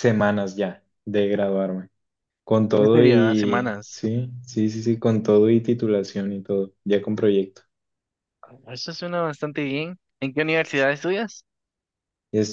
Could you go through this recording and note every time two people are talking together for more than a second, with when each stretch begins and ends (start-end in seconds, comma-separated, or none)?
2.8-4.0